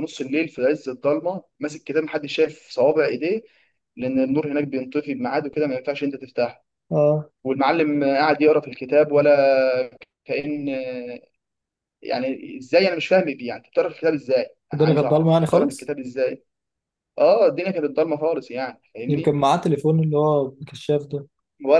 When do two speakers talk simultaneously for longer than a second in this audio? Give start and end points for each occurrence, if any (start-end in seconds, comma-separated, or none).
14.7-15.9